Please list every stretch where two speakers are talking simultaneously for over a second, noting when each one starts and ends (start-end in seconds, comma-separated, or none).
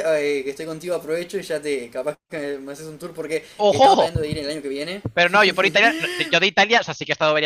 none